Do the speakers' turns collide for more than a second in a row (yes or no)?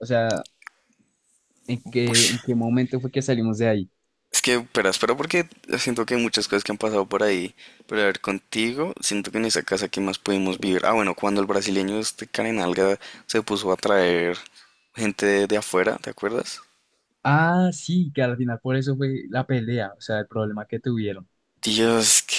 no